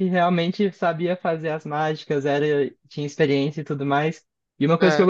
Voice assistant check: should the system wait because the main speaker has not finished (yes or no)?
yes